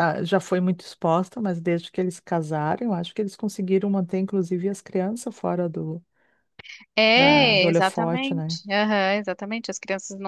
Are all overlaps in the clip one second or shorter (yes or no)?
no